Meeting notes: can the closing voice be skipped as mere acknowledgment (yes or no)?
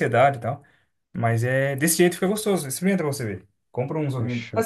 yes